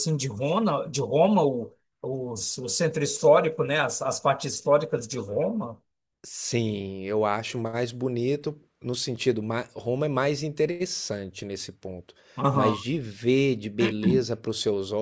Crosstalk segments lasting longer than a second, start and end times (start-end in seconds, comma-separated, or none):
none